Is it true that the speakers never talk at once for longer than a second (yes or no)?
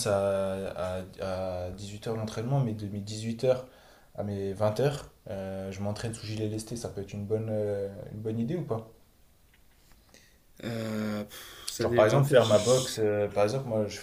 no